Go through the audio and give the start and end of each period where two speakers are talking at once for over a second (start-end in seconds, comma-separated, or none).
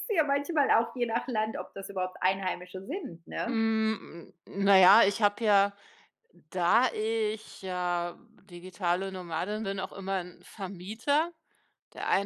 none